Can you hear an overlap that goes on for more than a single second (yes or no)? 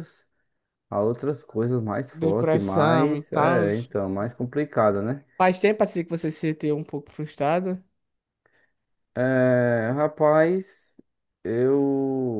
yes